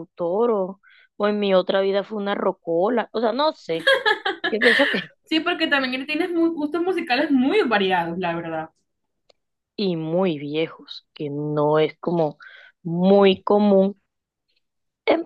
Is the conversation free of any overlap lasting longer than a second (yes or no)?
yes